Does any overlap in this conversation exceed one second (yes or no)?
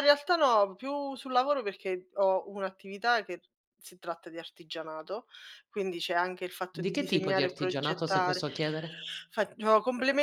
yes